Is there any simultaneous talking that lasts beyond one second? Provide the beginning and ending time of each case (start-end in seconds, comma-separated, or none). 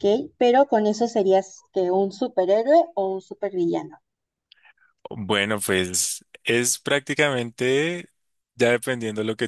none